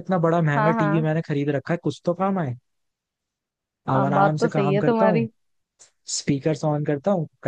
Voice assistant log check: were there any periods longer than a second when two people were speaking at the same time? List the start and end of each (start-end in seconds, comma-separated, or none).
4.0-5.3